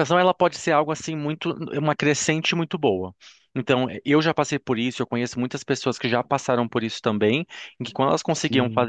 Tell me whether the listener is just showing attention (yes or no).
yes